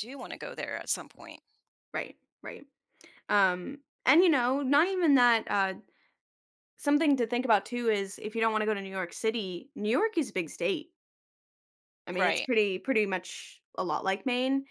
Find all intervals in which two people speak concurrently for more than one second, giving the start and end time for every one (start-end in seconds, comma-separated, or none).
none